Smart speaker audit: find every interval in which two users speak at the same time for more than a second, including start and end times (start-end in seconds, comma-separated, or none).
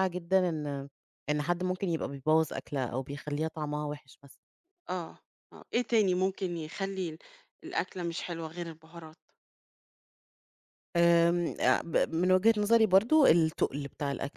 none